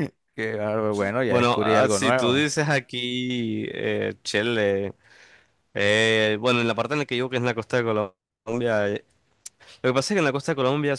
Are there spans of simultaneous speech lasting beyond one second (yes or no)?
yes